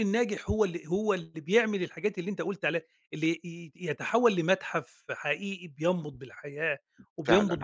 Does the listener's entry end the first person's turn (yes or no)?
yes